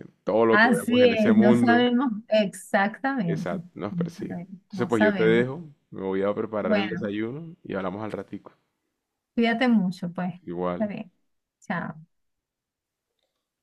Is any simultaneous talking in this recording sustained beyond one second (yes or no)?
yes